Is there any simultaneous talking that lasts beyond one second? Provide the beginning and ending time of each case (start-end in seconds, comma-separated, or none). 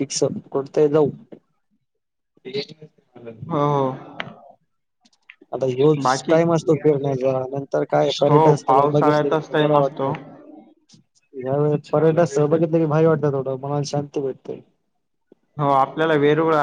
8.3-10.2